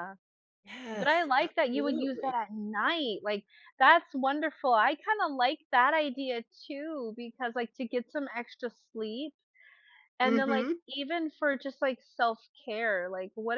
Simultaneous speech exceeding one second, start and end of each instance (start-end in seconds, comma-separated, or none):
0.9-2.4